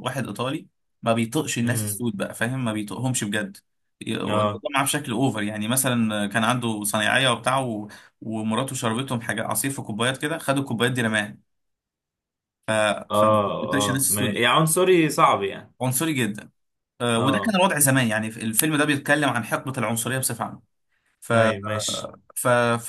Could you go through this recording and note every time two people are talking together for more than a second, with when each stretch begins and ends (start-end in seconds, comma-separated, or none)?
13.1-14.4